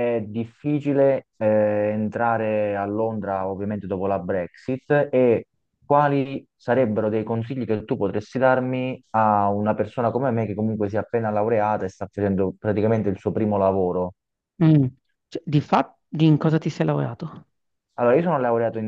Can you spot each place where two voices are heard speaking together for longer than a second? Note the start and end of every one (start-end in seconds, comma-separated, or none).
none